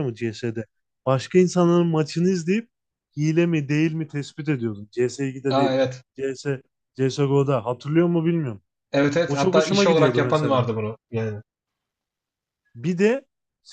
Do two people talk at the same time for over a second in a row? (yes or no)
yes